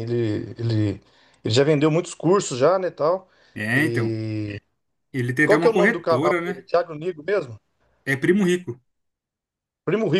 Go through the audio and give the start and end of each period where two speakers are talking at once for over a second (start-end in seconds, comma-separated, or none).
5.4-6.7